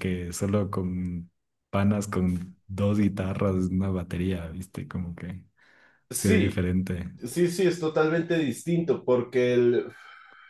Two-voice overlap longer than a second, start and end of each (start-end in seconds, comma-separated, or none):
none